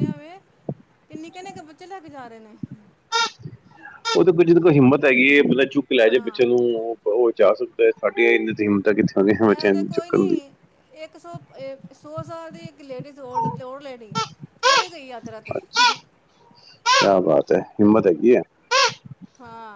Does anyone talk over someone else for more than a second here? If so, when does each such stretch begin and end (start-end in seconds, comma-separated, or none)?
none